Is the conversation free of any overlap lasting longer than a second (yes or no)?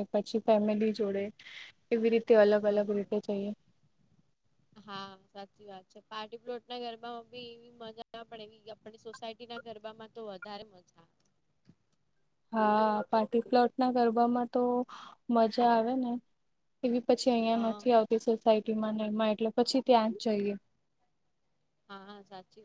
yes